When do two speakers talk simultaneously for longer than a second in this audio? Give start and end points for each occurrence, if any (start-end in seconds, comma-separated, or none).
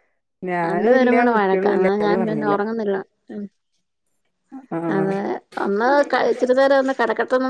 0.7-2.5